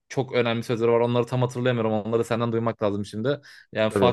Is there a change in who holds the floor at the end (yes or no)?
no